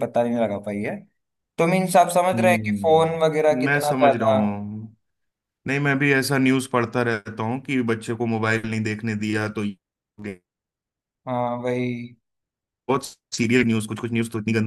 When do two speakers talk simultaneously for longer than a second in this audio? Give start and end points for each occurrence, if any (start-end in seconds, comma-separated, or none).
2.4-4.4